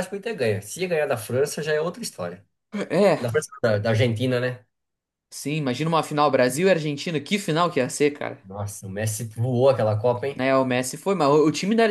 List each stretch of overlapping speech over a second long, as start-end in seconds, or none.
none